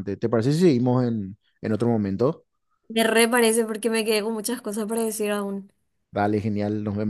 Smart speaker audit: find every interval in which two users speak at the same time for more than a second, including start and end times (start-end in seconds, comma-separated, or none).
none